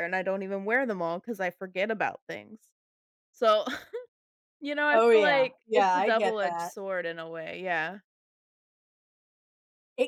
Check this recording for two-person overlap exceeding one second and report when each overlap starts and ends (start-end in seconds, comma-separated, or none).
4.9-6.7